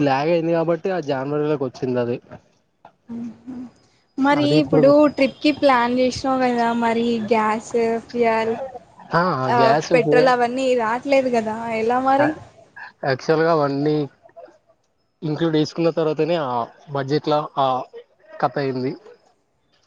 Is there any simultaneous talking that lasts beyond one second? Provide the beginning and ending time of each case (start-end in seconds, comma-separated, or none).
none